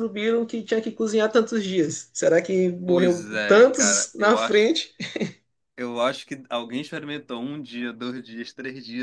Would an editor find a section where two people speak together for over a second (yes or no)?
yes